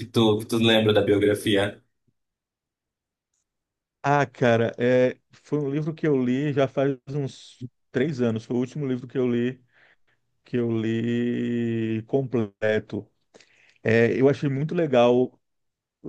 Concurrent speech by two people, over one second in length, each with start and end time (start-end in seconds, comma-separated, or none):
none